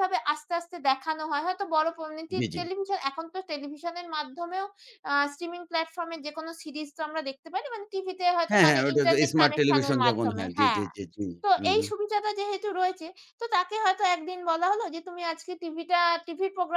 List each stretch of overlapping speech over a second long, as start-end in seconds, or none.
8.5-10.8